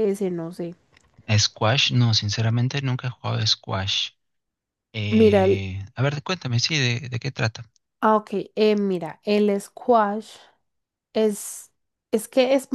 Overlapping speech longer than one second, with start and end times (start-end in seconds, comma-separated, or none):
none